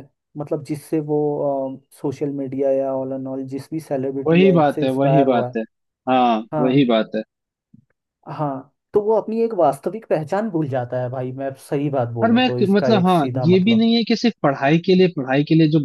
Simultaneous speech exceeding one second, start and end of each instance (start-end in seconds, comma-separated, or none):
4.3-5.6, 12.2-13.9